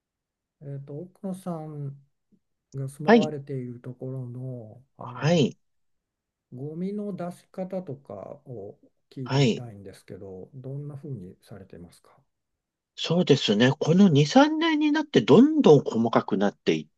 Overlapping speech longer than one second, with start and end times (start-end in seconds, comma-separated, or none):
none